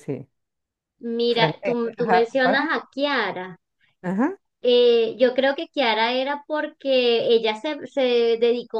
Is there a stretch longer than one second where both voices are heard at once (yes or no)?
yes